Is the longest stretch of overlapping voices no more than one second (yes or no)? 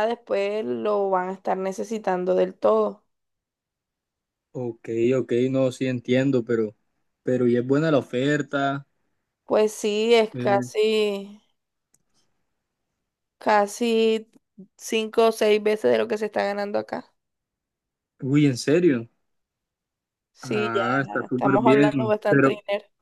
no